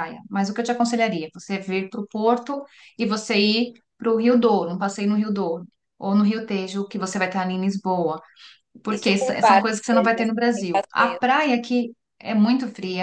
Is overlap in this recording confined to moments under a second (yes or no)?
no